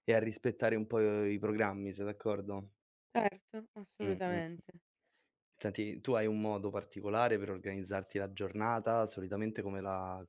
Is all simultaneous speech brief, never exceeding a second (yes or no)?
yes